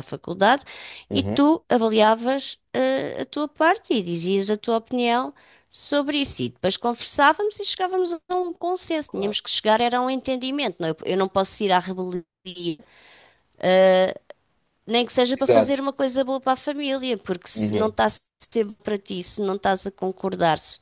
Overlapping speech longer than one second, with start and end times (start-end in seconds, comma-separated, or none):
none